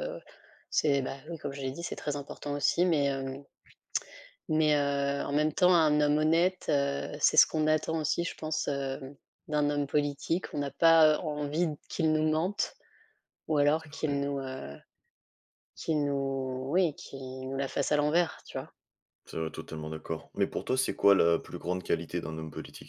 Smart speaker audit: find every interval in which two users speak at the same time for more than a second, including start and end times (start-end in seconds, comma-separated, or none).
none